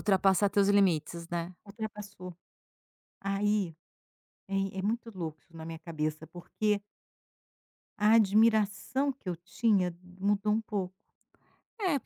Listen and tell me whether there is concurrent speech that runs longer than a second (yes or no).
no